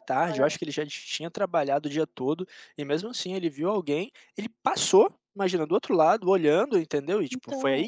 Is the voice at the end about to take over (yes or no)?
no